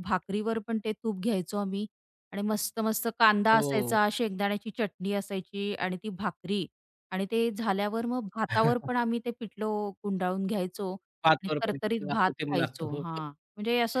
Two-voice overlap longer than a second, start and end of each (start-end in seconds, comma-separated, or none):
11.2-13.0